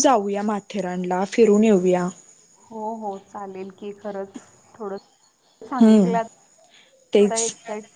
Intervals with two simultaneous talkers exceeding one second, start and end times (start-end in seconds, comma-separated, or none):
none